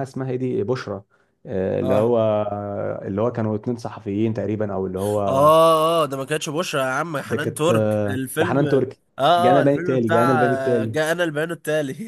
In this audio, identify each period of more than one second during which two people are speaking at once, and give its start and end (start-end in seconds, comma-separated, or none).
7.2-8.7, 9.4-11.0